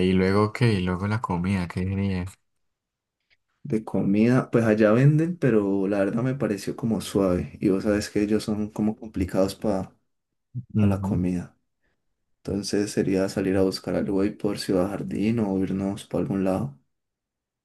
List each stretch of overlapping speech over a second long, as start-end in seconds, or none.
none